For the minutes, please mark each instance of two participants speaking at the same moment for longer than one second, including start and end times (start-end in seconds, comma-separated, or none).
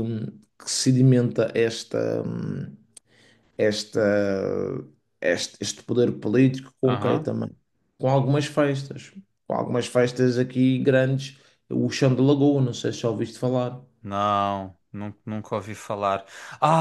none